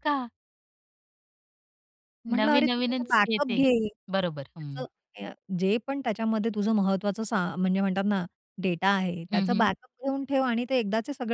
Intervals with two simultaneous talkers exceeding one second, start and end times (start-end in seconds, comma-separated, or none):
2.3-3.6